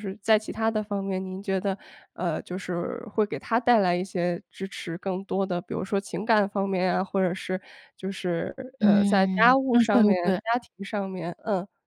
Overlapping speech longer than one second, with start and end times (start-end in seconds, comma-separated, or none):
8.8-10.4